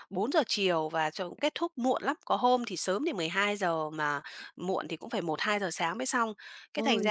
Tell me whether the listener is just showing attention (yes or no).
yes